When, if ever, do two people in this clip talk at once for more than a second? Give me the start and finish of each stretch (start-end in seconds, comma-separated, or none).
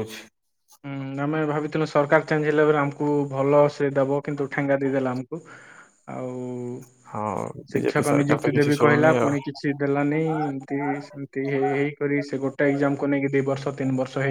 7.7-9.3